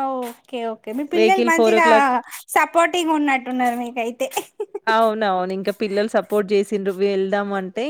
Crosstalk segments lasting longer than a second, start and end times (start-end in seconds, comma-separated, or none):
none